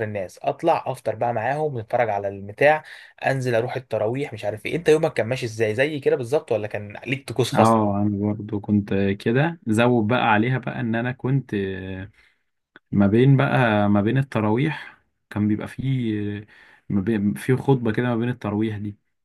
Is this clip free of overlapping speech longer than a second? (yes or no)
yes